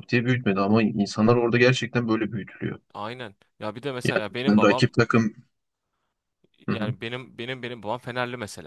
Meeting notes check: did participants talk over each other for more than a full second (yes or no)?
no